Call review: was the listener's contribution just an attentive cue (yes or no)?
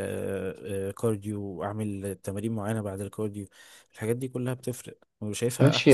no